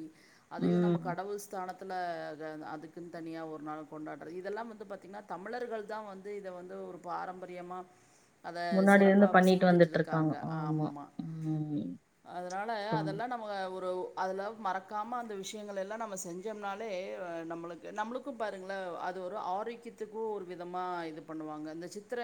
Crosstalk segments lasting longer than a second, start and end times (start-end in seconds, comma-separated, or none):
8.8-10.9